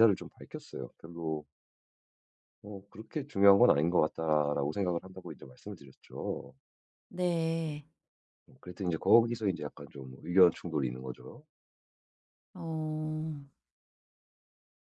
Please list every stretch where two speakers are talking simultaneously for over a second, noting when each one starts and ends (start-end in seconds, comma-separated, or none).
none